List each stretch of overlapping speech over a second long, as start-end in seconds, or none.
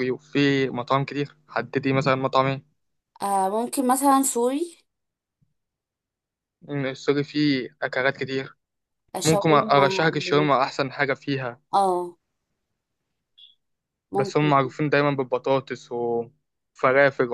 9.2-10.5